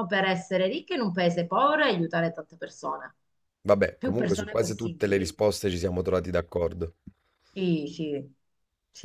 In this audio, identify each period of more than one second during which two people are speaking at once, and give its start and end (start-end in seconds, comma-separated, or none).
4.0-5.3